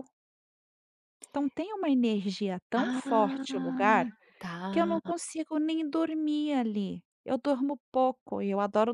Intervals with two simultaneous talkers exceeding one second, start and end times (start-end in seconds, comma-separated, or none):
2.8-4.1